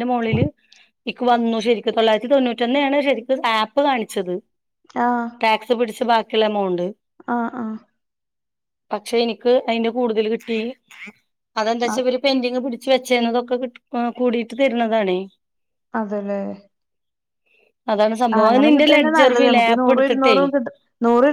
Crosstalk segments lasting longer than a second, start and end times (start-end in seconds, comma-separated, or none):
18.4-20.4